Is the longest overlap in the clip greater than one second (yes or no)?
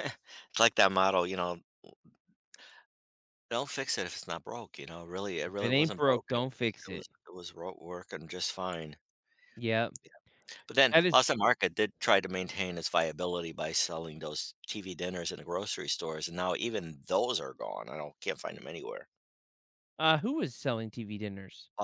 yes